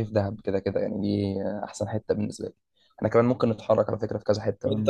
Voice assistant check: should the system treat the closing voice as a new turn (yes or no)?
yes